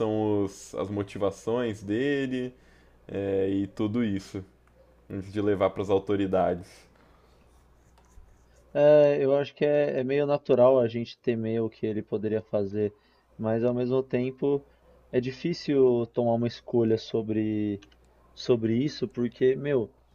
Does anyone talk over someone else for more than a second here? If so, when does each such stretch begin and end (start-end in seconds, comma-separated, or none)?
none